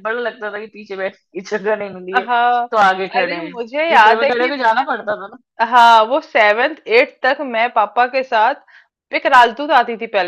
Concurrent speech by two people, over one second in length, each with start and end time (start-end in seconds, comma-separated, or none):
3.2-4.5